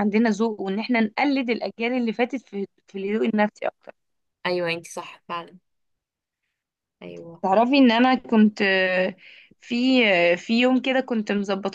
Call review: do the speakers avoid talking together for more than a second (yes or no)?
yes